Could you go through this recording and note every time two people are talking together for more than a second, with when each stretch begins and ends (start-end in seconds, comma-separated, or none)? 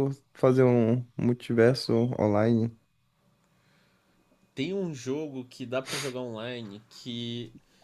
none